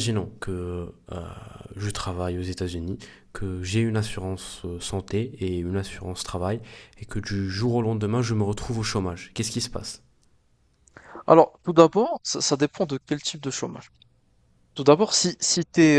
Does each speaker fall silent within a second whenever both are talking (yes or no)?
yes